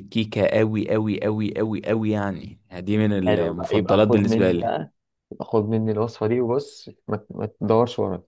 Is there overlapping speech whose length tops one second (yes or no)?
yes